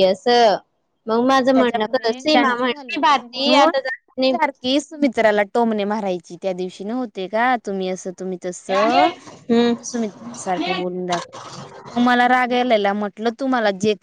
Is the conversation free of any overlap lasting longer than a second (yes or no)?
no